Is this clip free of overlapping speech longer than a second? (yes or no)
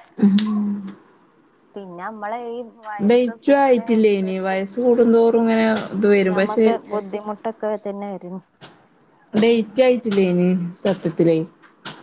no